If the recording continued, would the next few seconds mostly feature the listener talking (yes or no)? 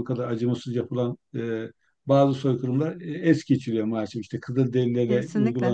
no